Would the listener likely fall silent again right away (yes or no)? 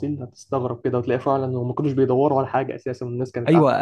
no